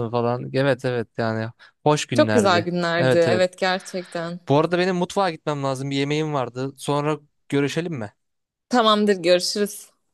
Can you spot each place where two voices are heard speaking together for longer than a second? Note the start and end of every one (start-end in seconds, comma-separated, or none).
2.1-3.5